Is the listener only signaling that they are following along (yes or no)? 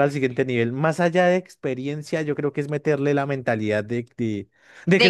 yes